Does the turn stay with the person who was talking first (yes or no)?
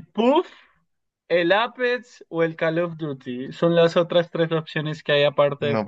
no